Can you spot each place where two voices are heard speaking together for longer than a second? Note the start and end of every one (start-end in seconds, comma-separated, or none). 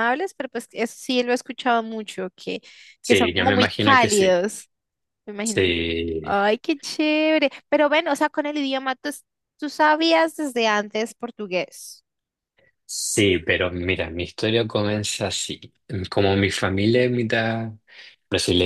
3.0-4.3